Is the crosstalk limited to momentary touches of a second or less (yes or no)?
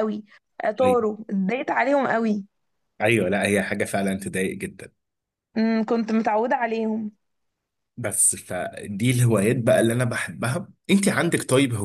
yes